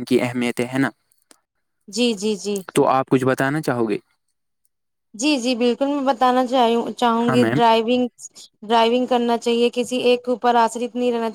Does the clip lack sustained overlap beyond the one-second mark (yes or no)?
yes